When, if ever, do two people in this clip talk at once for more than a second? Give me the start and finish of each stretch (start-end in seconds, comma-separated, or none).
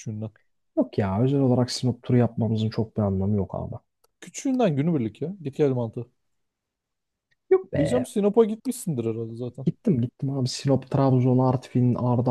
none